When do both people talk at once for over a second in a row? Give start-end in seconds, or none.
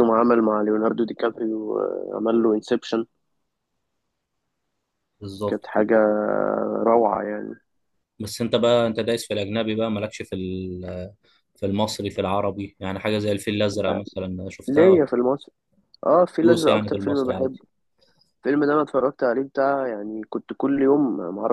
16.4-17.6